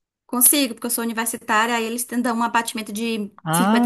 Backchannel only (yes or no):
no